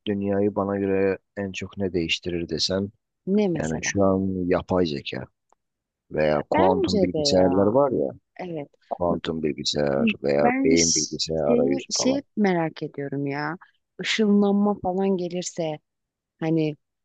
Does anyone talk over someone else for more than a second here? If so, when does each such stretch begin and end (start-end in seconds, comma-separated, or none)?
6.5-7.8, 10.4-12.2